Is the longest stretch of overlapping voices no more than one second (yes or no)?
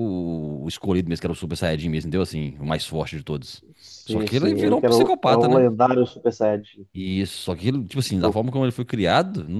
no